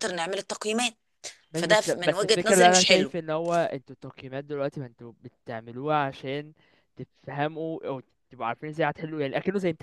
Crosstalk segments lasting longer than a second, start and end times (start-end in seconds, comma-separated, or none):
1.5-3.1